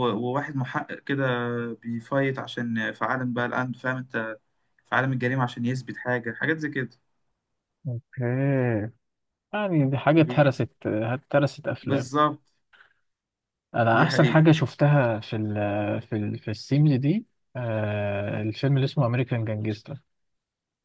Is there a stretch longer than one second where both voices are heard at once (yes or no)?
no